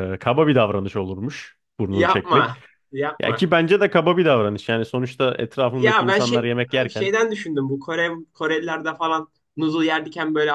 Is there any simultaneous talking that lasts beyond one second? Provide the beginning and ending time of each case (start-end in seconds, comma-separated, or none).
5.8-7.1